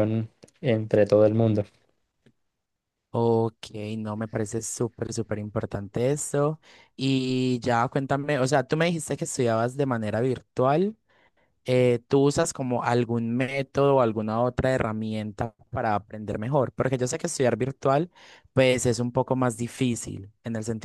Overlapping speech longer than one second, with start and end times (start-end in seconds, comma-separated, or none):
none